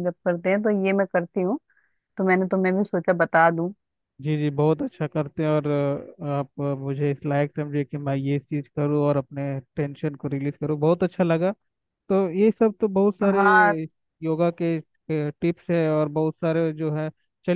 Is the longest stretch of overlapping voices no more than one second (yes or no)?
yes